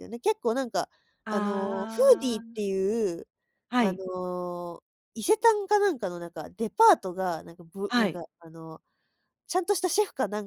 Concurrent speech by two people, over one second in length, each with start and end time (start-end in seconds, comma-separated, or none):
1.3-2.6